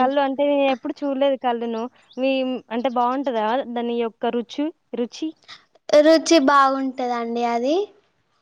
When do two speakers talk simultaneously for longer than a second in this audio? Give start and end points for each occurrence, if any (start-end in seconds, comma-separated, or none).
none